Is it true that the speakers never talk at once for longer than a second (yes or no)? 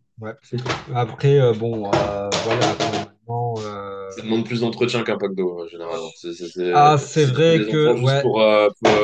no